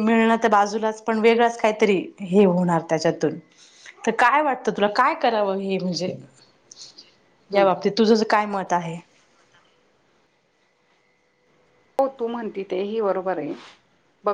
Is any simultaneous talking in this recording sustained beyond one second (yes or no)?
no